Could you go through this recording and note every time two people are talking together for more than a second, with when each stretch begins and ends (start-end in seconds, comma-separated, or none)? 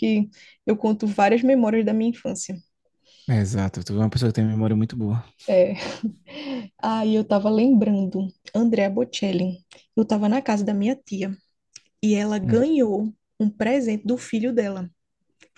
none